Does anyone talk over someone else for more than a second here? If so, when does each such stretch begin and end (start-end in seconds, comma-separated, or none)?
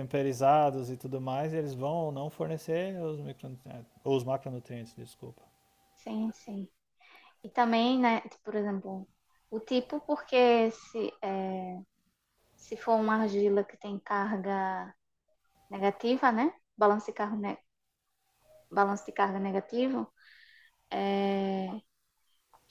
none